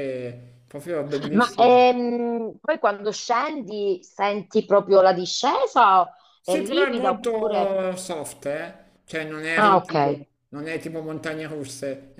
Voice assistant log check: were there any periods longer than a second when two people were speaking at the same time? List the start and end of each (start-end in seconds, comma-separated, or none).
6.4-7.8